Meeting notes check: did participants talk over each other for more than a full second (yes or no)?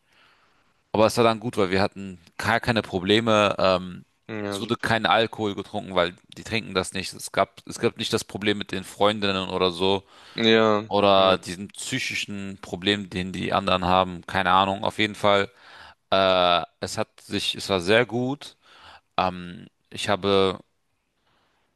no